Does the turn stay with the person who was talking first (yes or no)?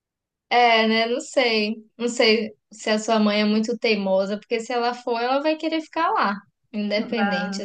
no